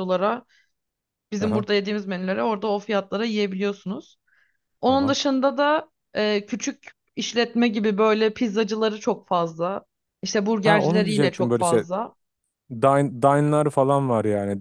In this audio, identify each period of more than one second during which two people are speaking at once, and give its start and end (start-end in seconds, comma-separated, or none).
10.6-11.8